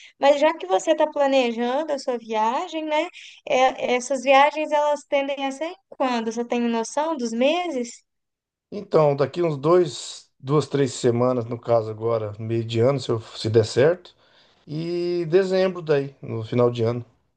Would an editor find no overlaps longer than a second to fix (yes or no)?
yes